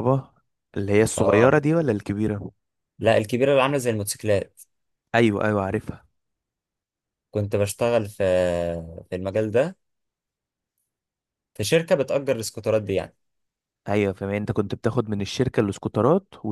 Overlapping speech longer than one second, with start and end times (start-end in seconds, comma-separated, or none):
none